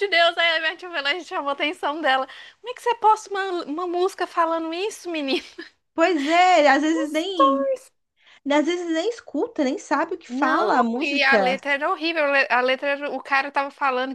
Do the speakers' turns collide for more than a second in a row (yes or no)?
yes